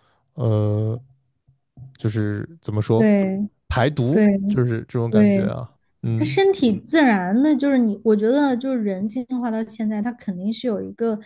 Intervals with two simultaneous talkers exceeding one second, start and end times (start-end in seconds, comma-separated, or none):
none